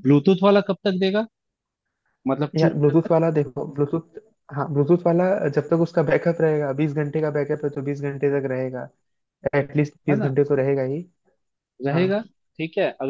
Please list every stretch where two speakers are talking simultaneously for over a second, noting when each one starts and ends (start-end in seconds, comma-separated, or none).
none